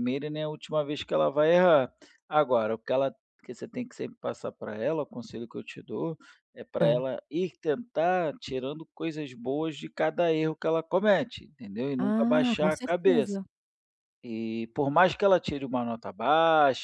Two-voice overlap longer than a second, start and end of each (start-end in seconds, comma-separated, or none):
12.0-13.3